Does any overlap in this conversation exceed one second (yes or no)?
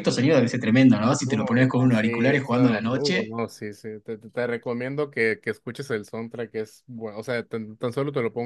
yes